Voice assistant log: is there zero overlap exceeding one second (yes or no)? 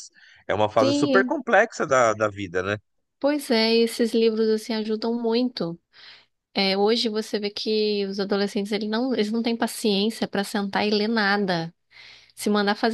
yes